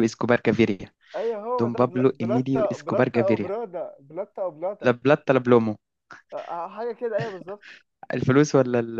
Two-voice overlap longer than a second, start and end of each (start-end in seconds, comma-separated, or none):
1.6-3.5